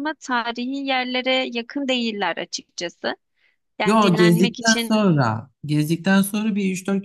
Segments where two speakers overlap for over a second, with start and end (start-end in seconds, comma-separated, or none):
3.9-5.1